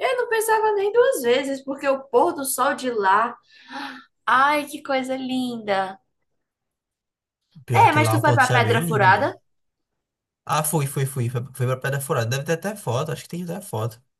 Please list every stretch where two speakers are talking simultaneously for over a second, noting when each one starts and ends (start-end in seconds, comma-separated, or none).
7.7-9.3